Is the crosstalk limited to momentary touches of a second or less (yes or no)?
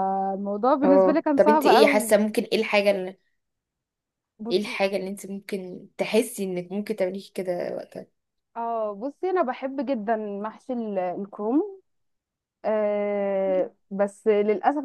no